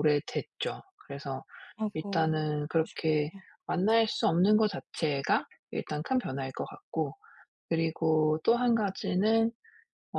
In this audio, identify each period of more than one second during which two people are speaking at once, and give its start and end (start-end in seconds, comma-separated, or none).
1.9-3.3